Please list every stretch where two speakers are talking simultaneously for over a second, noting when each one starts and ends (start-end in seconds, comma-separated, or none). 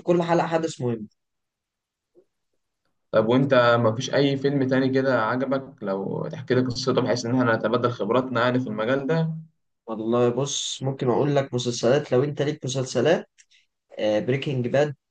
none